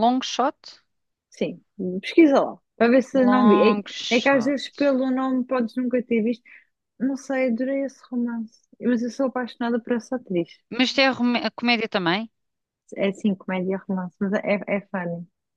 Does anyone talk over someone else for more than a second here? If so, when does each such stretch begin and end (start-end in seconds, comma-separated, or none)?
3.1-4.6